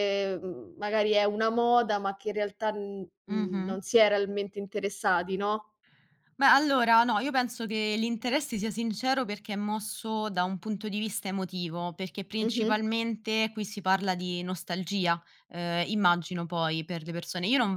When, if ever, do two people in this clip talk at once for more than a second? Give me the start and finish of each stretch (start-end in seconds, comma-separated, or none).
none